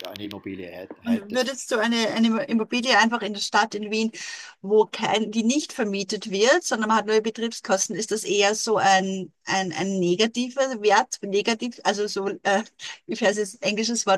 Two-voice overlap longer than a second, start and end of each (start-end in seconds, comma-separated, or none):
none